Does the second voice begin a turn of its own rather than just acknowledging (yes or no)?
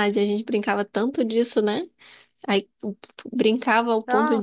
no